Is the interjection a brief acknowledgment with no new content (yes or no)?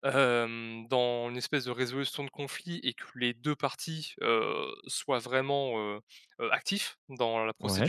yes